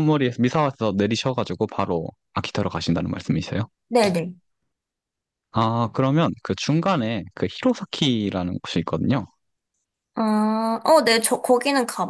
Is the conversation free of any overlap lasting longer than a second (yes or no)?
yes